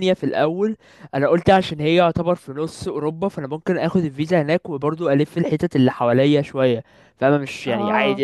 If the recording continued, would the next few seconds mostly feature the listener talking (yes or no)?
no